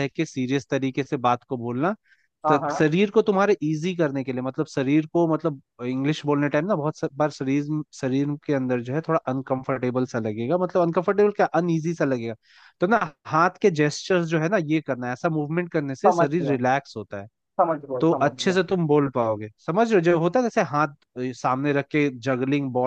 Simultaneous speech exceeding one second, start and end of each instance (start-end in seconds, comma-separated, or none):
none